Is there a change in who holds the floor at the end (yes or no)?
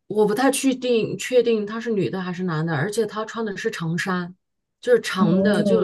yes